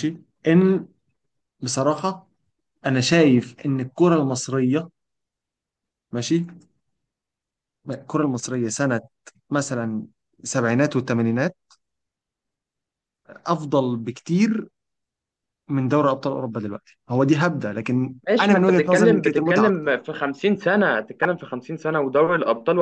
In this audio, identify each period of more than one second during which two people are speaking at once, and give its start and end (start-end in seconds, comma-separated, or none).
18.3-19.9